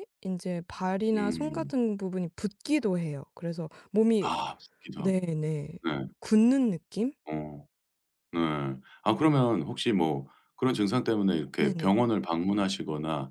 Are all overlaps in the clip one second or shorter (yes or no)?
yes